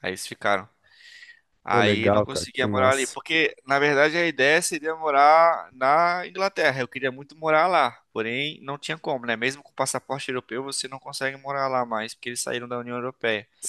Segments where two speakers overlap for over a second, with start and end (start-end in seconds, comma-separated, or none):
1.7-3.2